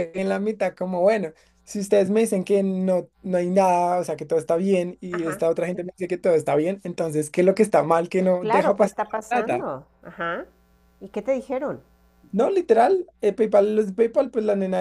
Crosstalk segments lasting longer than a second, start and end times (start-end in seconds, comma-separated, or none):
8.4-9.8